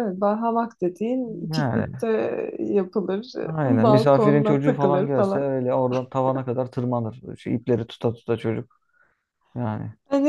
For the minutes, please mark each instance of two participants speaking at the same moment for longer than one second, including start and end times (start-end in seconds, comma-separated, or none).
3.5-5.5